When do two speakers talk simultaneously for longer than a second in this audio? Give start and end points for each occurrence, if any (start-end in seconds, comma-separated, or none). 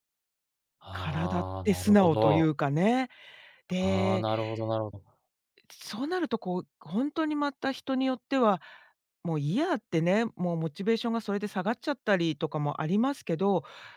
0.9-2.5